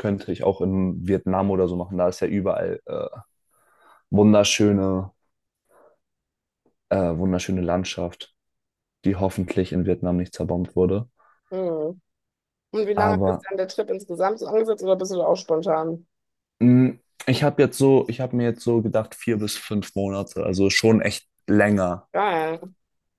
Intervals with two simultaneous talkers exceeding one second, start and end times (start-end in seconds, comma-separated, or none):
none